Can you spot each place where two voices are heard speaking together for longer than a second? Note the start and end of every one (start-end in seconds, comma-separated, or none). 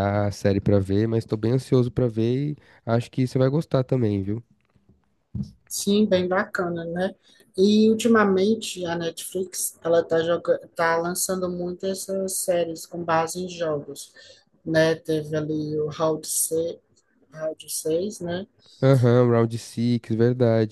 none